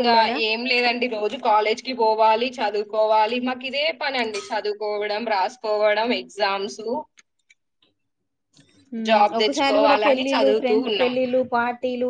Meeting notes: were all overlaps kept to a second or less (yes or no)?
no